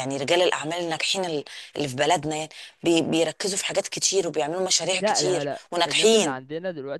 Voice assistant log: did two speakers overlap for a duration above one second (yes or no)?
yes